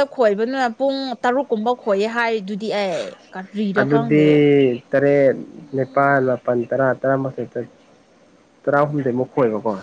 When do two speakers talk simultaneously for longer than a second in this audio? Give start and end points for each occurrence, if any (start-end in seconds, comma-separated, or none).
none